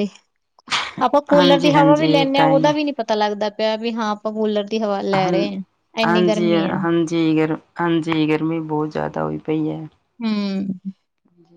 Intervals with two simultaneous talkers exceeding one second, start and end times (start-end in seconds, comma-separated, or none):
1.3-2.7